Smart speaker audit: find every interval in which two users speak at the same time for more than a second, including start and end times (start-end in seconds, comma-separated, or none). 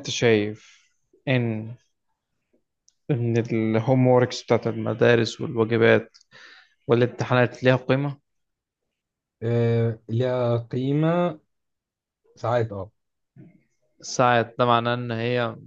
none